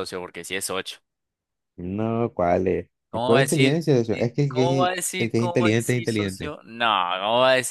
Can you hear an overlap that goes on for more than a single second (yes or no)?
yes